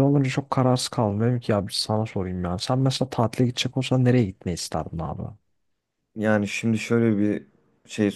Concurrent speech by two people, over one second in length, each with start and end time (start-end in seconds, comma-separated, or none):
none